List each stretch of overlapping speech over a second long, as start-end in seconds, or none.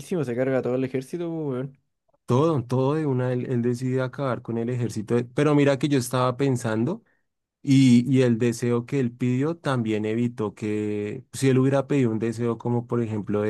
none